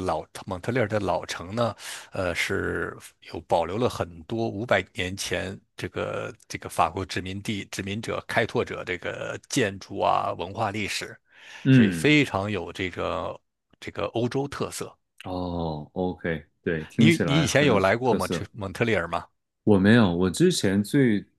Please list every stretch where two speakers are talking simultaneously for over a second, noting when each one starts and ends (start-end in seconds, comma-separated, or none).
17.0-18.5